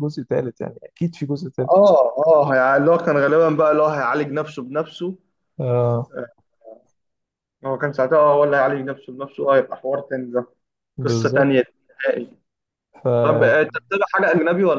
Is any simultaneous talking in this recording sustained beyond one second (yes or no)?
no